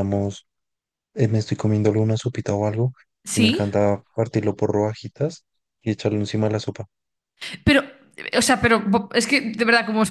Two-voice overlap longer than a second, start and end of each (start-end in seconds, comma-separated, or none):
none